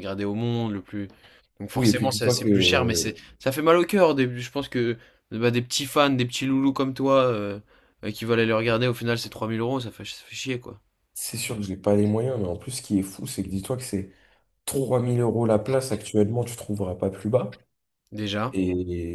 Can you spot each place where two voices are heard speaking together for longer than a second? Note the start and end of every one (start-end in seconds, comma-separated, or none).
1.7-3.2